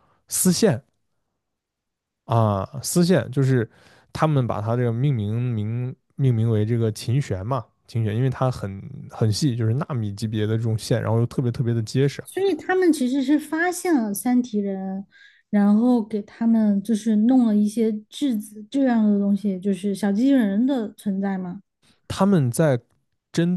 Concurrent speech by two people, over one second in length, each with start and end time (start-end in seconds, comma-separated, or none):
none